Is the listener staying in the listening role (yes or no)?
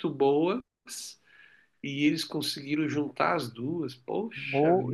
no